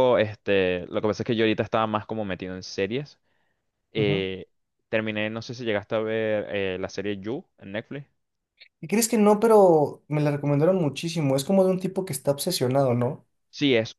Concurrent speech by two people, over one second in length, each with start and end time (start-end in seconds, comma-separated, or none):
none